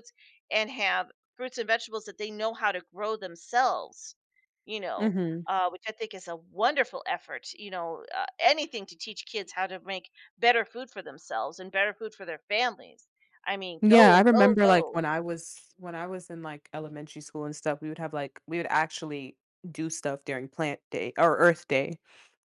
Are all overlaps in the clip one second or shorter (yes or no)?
no